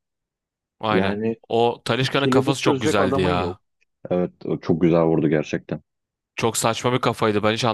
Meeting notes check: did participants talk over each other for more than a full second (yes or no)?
yes